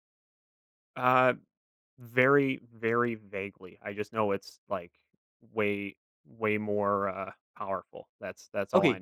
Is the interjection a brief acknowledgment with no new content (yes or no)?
no